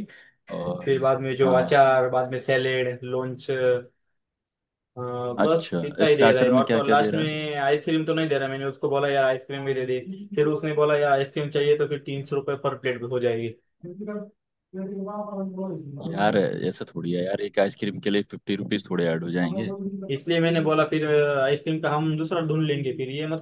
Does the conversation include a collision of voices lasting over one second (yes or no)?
yes